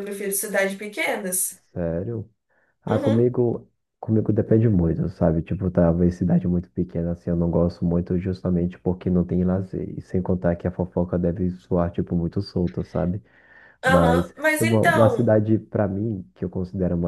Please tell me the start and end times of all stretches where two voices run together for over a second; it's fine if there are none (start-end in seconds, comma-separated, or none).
13.8-15.3